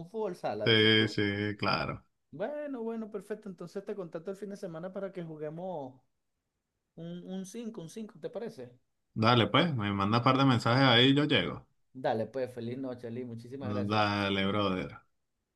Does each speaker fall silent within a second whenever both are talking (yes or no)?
yes